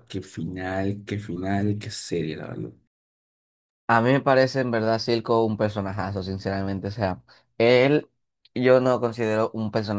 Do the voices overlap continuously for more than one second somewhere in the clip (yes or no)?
no